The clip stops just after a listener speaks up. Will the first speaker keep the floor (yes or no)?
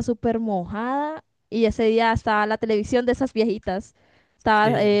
yes